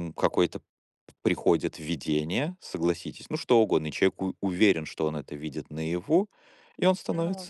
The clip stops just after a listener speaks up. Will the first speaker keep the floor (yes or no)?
yes